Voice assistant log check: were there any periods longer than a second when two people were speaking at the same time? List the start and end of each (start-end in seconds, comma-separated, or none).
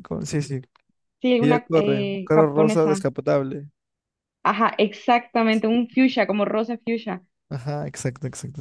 1.4-3.0